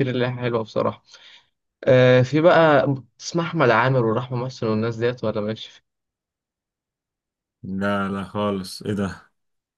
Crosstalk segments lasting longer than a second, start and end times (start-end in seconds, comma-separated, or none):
none